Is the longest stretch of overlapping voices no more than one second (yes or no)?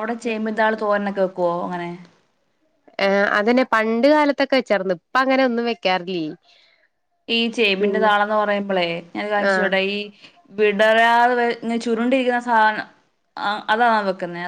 yes